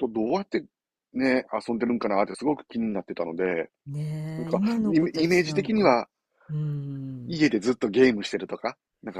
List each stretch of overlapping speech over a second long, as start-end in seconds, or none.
4.4-6.0